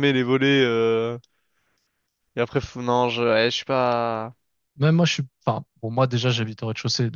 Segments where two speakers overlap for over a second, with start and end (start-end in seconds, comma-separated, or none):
none